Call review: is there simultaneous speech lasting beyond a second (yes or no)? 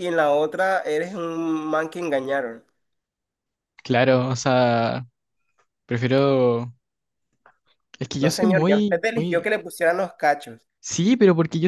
yes